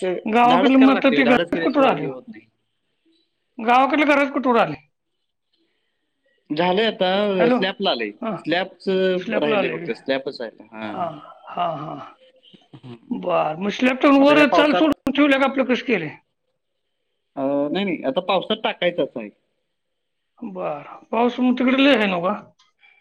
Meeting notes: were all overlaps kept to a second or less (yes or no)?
no